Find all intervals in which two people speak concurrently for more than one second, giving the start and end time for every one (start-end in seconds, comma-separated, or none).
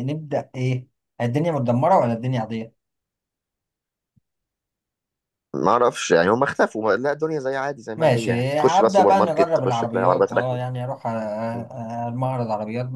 8.0-10.6